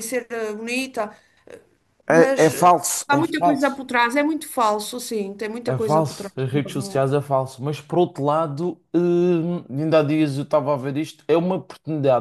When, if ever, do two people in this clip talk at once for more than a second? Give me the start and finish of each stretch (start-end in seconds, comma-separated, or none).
2.1-3.8, 5.7-7.1